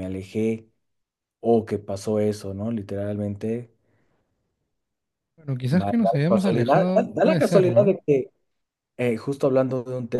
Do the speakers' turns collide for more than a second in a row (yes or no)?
yes